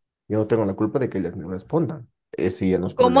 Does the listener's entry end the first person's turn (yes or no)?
yes